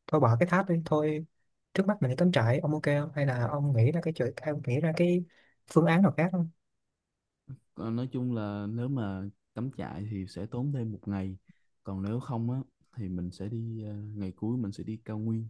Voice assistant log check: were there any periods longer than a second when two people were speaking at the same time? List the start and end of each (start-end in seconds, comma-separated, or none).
none